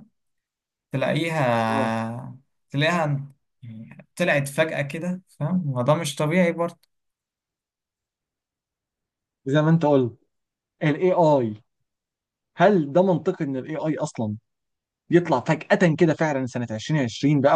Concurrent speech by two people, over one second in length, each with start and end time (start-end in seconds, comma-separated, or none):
none